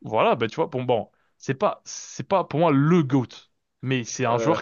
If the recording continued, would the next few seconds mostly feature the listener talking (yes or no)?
no